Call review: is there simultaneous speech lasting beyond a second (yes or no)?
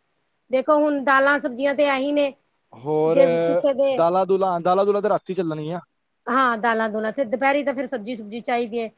no